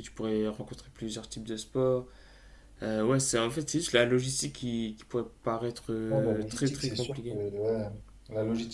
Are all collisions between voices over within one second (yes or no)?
no